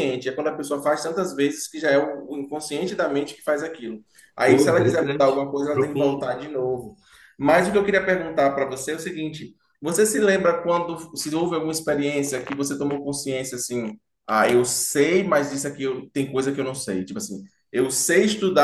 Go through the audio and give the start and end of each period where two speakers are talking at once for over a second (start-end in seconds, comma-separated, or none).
4.4-6.3